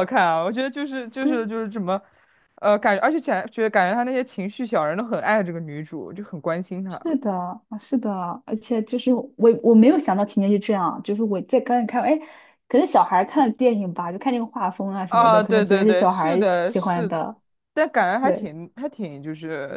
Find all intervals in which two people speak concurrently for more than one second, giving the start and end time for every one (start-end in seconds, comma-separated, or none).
15.1-17.1